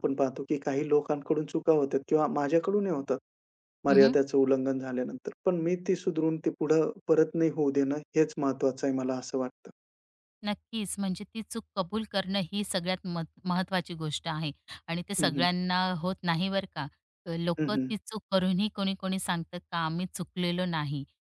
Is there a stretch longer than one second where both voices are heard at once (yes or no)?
no